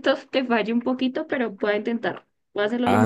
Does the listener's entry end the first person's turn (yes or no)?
yes